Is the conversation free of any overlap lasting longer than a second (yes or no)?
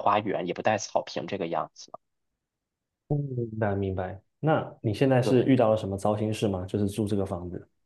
yes